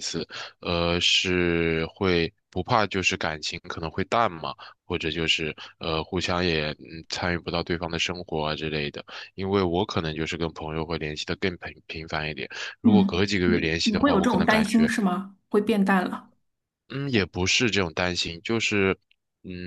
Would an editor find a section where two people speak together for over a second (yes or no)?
yes